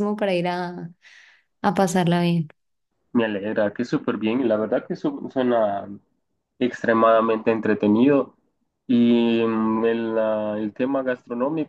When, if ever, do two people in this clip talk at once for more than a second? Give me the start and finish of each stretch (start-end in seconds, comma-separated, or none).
none